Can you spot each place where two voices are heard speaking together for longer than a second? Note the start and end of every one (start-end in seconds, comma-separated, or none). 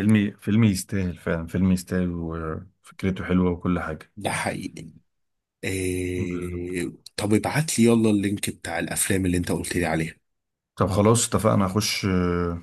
none